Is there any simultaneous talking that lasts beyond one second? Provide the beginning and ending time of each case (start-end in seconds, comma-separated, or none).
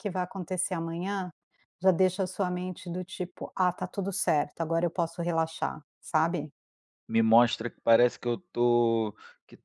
none